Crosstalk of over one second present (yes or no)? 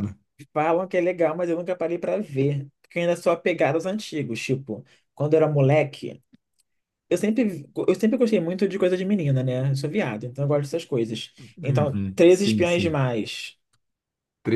yes